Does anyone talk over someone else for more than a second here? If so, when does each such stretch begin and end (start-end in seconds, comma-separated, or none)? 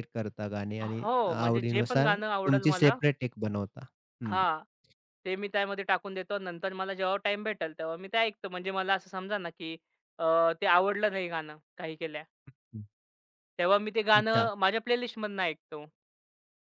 0.8-3.0